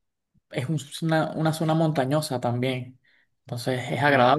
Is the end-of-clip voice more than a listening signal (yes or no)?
no